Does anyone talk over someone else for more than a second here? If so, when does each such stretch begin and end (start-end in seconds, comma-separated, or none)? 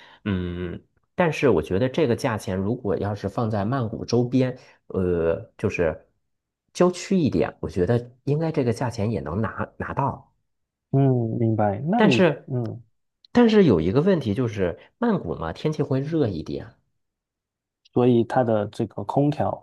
none